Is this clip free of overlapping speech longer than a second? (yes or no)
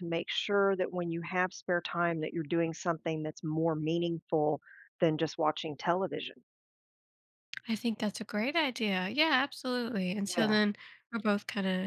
yes